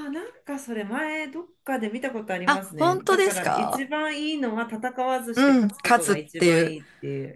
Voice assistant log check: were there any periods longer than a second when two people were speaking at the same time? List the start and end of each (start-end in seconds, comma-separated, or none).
2.5-3.9, 5.3-6.8